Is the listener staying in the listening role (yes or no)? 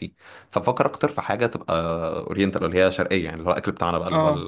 no